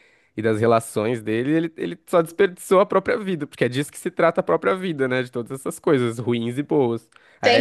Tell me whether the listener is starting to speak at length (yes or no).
no